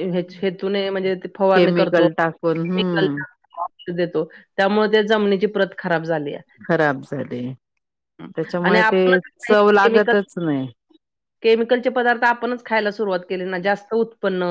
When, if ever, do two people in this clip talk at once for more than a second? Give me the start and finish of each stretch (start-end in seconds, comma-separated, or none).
8.6-10.1